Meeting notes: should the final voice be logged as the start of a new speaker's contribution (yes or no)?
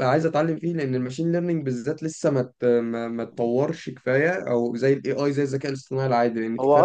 yes